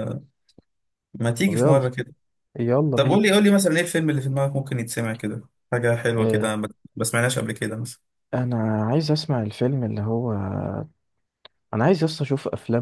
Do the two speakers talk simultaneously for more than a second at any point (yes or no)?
no